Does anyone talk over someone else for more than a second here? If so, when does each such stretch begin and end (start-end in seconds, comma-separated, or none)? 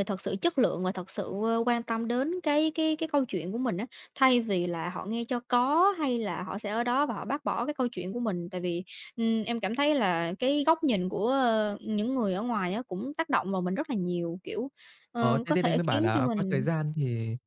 15.2-16.7